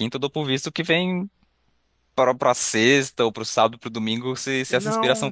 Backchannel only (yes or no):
no